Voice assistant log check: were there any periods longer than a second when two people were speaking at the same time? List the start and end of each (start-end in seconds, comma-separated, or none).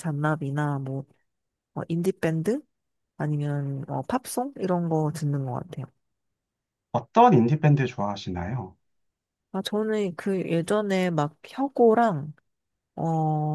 none